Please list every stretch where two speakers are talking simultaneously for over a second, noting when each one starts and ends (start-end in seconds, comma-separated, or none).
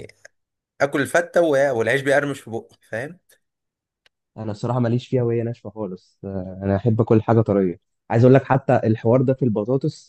none